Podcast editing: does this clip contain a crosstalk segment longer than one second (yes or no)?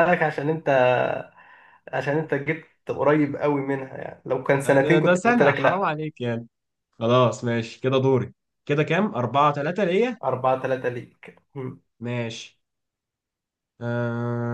yes